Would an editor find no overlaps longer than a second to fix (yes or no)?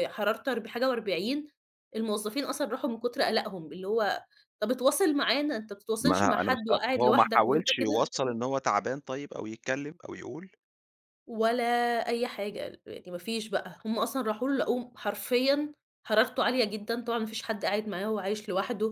no